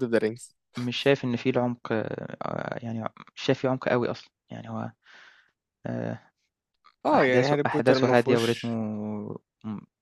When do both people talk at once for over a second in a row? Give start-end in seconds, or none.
7.1-8.7